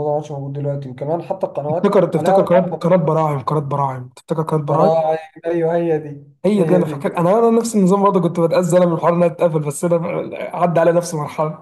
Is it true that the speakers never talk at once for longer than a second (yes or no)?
no